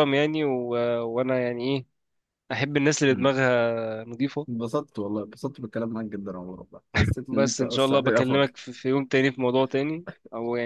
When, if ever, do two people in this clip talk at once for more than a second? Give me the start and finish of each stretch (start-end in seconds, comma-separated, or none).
7.3-8.5